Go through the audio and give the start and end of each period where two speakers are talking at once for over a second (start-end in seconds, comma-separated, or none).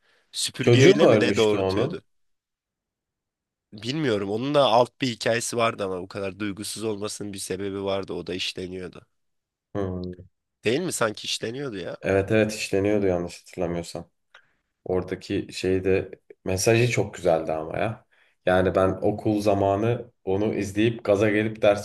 0.6-2.0